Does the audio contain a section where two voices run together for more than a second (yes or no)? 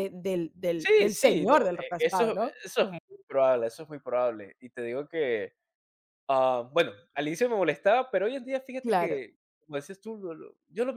yes